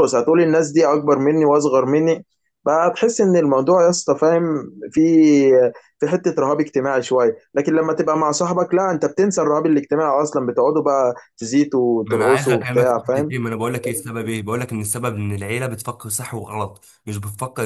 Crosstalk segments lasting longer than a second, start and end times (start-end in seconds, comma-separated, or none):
12.1-13.3